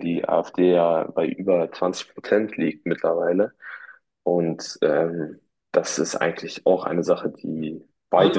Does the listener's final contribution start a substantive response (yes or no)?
yes